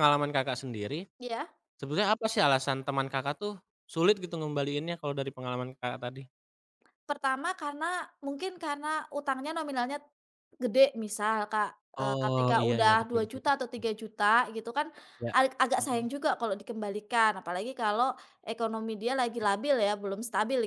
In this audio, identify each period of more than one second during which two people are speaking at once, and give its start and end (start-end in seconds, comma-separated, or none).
12.0-13.8